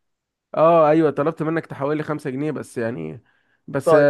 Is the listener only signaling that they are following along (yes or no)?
yes